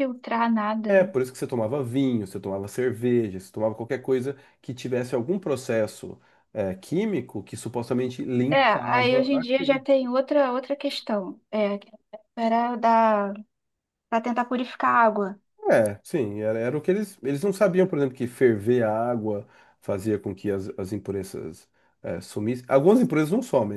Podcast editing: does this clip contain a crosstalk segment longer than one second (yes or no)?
yes